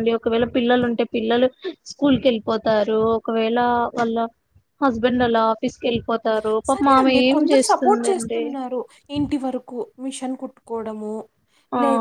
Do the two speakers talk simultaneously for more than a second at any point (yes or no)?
yes